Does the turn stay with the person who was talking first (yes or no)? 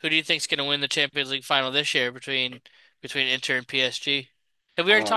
no